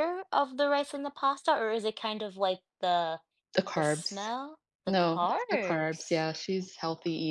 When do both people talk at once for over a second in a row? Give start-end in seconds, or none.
4.9-6.2